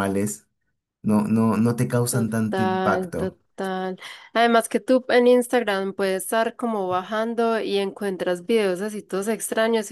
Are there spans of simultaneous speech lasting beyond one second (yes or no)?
yes